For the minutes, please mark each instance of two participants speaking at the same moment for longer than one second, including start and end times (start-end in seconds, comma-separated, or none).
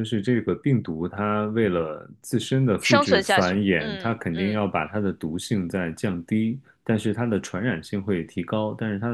2.8-4.7